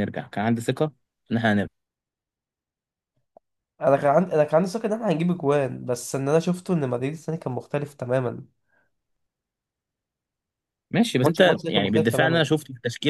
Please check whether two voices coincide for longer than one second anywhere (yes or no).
yes